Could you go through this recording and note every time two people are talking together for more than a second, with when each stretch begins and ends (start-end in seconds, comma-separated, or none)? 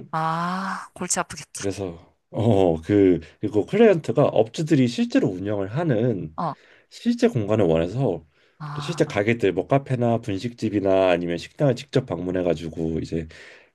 none